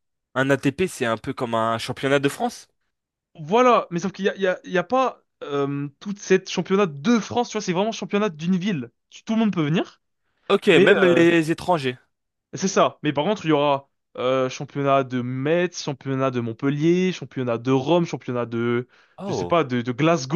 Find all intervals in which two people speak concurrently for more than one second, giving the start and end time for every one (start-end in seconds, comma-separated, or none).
none